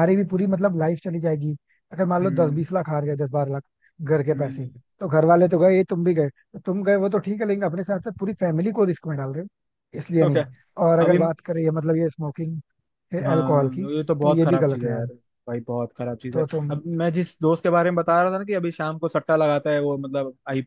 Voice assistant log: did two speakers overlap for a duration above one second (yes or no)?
yes